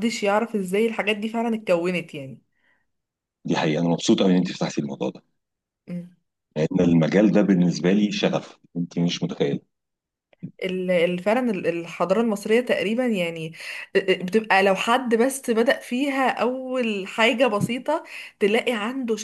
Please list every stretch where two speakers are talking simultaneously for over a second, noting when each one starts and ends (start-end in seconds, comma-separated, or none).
none